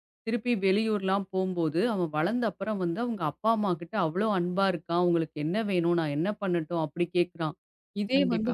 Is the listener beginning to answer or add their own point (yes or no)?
no